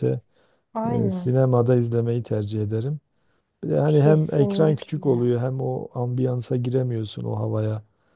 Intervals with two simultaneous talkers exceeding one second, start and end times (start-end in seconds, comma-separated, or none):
3.9-5.3